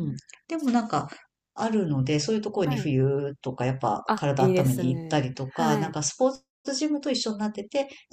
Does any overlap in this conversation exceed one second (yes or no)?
yes